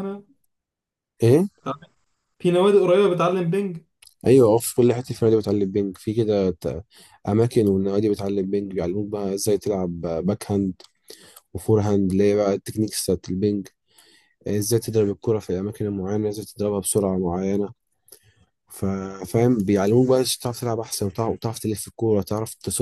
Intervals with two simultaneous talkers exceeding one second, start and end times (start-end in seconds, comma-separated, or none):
none